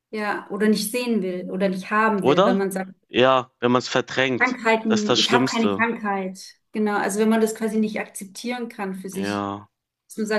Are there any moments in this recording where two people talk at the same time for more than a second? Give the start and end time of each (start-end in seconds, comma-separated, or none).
4.4-5.9